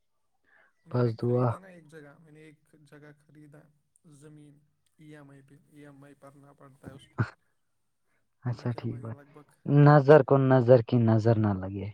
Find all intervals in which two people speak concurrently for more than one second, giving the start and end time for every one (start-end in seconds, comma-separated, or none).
none